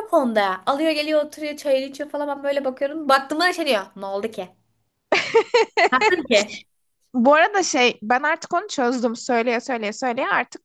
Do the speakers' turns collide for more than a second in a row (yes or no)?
no